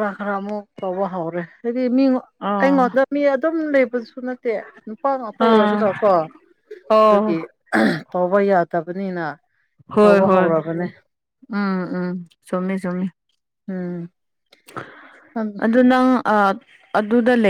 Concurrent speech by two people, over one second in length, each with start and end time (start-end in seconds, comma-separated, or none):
none